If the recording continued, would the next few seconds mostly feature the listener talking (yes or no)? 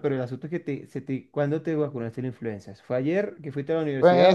yes